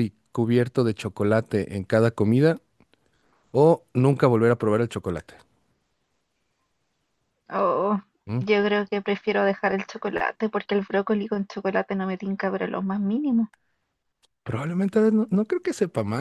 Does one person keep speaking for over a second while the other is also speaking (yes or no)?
no